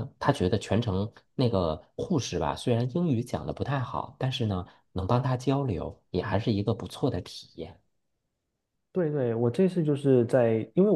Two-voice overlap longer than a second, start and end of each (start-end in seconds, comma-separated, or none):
none